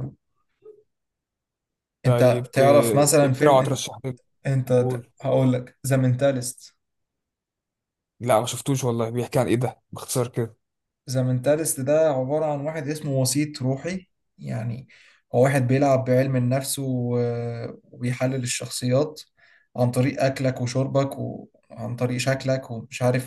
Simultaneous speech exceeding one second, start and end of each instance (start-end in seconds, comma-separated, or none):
none